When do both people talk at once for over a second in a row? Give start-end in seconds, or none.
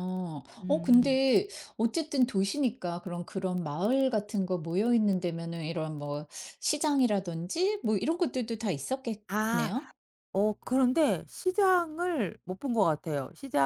none